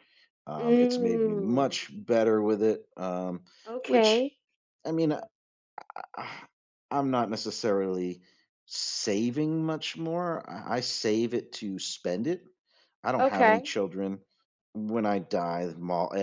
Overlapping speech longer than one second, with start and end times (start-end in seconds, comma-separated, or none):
0.6-1.8